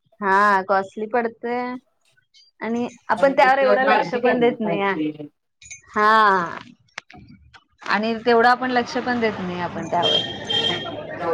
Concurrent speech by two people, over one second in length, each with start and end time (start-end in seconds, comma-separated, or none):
3.2-4.9